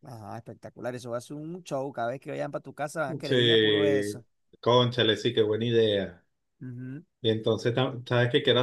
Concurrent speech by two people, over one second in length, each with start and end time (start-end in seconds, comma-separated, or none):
none